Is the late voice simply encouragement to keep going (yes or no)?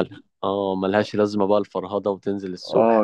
no